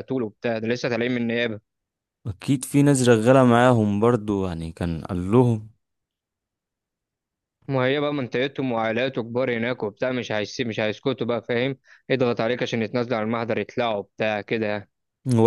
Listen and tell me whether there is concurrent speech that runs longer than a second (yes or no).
no